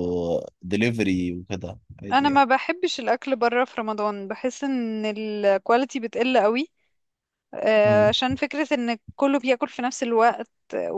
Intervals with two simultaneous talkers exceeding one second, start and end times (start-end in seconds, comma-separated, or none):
none